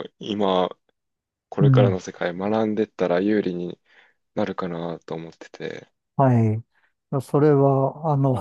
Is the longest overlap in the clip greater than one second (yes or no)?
no